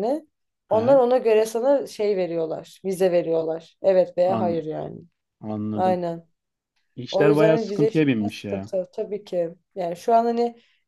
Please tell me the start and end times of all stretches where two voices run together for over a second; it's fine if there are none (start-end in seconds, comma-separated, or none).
7.1-8.7